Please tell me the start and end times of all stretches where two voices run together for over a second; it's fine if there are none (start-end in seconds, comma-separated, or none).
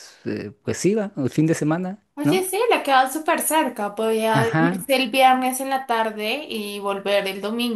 none